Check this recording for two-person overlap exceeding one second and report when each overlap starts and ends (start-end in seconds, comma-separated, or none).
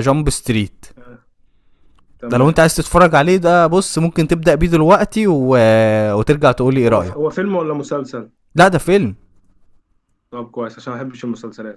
none